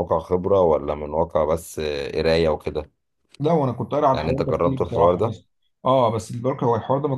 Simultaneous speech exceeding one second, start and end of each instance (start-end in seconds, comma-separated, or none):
4.1-5.3